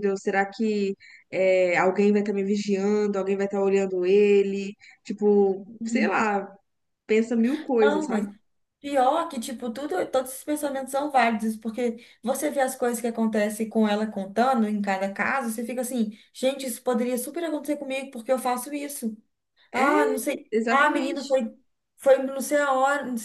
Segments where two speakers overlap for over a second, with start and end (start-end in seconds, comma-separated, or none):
19.7-21.4